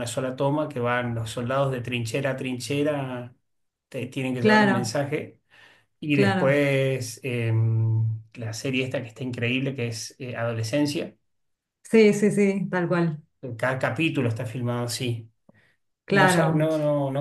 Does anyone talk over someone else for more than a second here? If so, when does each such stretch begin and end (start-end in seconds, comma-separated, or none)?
none